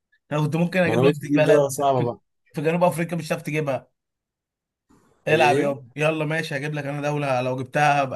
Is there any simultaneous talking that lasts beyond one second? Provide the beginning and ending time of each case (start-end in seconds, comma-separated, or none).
0.8-2.1